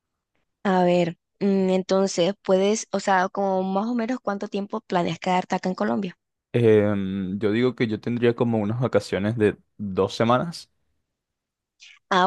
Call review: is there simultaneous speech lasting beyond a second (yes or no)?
no